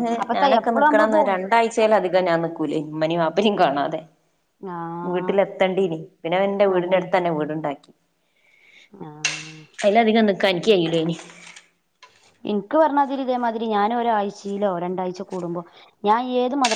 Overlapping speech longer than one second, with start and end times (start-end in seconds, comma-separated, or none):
none